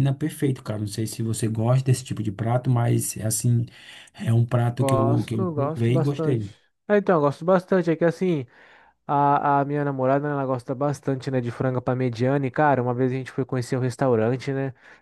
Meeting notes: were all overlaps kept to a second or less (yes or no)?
no